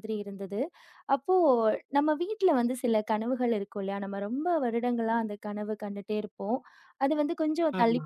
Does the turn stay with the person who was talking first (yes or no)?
yes